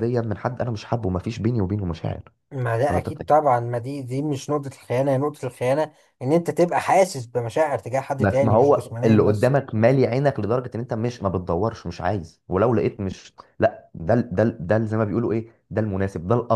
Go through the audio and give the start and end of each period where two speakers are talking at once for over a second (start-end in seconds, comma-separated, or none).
8.2-9.5